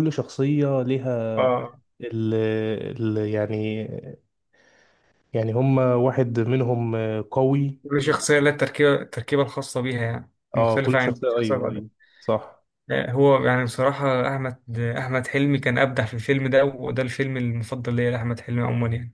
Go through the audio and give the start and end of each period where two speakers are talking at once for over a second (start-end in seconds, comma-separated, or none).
10.6-11.8